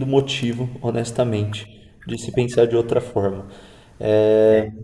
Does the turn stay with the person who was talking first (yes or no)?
yes